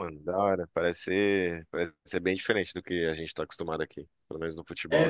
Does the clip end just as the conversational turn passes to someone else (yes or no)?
yes